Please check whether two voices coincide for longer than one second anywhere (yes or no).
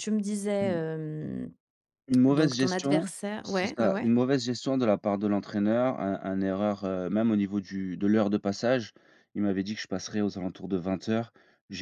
yes